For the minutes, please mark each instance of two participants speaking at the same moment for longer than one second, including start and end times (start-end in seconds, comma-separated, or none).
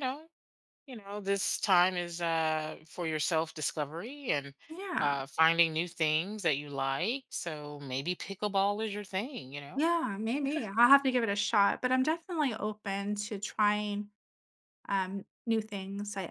none